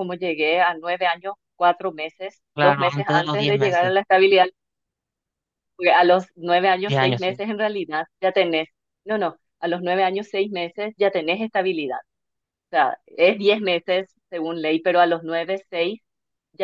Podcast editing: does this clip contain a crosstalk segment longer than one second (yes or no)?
yes